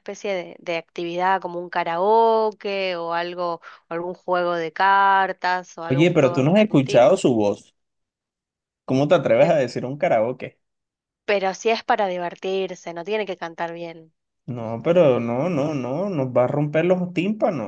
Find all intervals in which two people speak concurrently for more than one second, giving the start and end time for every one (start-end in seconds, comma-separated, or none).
5.9-7.2